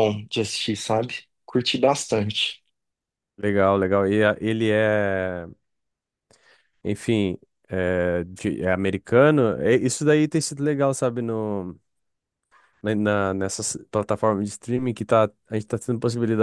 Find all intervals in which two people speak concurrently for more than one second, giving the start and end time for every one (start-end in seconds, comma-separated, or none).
none